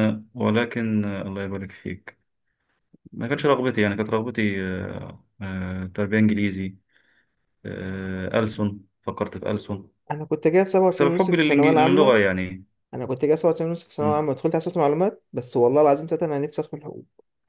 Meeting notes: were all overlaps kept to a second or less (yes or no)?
no